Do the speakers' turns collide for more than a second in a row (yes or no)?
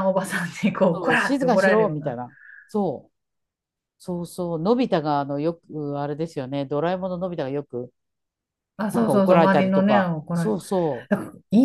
yes